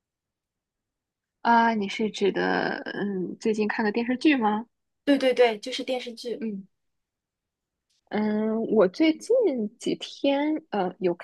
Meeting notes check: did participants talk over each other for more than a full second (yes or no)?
no